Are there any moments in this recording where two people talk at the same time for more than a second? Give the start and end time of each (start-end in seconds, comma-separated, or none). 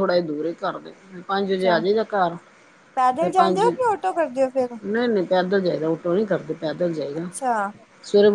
none